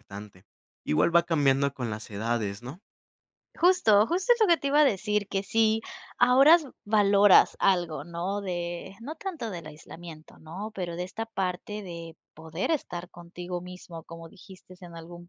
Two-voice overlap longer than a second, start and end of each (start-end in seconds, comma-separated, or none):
none